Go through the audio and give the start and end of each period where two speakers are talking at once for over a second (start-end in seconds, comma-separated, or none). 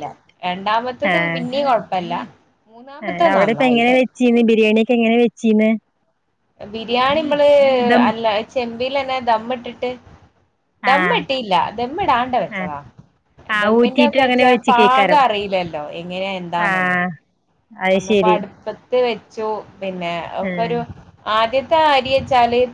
13.6-15.2